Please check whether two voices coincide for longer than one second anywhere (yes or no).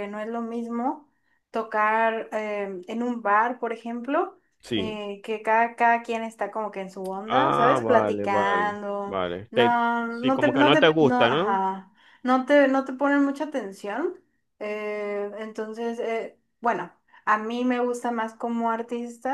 yes